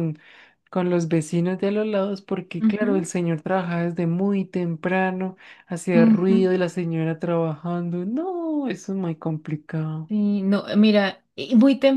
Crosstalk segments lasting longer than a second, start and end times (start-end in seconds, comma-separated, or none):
none